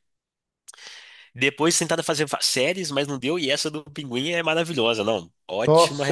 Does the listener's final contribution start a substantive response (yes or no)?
yes